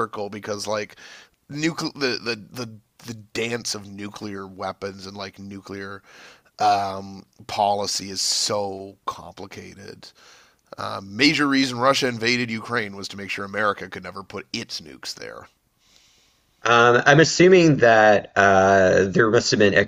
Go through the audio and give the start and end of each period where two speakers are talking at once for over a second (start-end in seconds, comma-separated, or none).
none